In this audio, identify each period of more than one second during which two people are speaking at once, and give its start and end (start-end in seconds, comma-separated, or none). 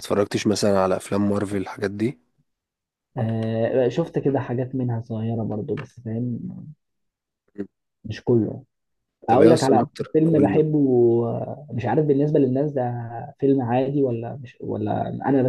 9.3-10.6